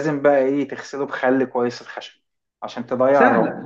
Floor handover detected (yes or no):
yes